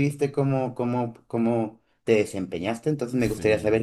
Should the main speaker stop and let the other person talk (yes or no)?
no